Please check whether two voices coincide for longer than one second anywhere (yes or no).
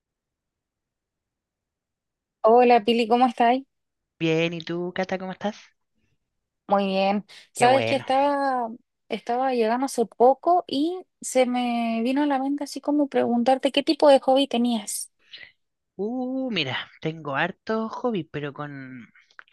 no